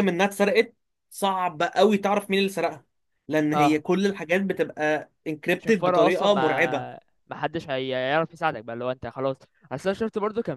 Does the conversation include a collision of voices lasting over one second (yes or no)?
yes